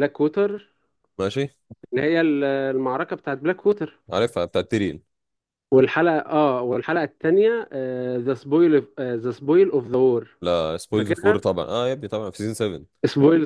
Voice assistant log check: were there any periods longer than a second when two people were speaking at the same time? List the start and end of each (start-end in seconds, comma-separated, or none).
none